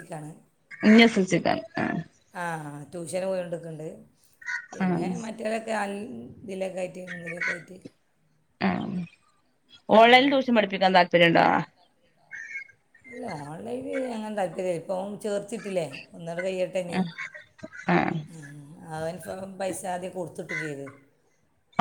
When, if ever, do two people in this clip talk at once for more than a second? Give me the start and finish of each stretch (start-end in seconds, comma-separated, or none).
none